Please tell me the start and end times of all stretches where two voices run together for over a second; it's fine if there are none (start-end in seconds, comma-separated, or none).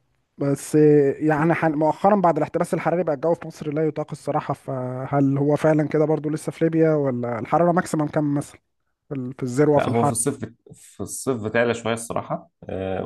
none